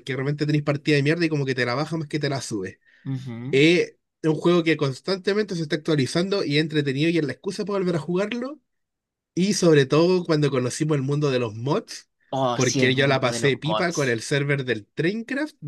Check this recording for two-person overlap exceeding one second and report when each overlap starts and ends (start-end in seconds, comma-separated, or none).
12.5-14.2